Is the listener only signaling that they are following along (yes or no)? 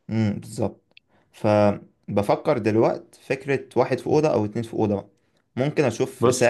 yes